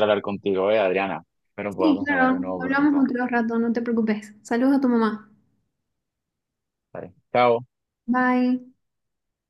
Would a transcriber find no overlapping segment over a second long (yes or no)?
no